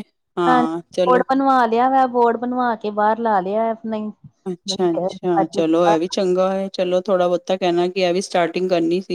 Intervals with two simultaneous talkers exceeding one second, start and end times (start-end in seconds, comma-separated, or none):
none